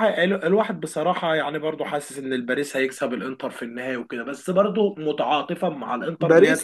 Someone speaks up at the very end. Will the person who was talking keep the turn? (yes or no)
no